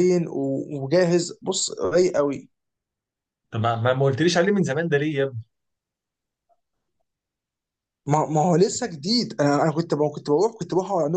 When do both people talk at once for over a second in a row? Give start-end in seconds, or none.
none